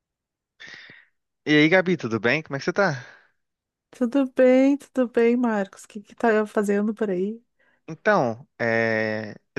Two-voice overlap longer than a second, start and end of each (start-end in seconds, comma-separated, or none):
none